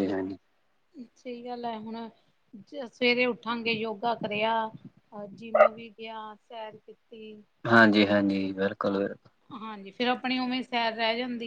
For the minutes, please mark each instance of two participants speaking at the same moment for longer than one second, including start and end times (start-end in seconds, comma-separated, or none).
none